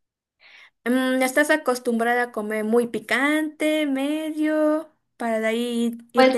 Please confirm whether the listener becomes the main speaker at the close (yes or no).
yes